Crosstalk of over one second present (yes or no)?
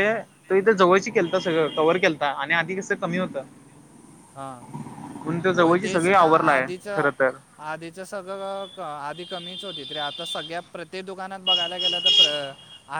yes